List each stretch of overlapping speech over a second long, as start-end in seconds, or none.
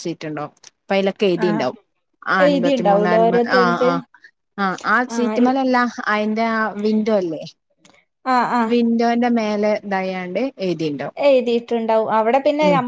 2.5-3.9